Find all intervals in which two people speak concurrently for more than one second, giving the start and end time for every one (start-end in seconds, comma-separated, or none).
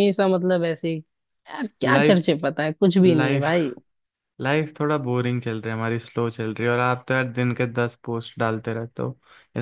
none